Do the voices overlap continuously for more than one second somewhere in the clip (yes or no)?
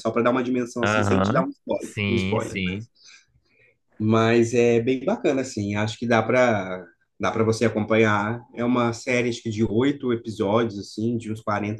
yes